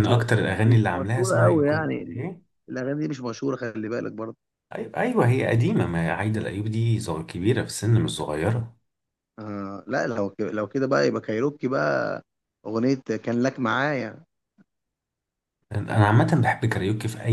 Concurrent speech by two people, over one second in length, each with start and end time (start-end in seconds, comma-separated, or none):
0.6-2.2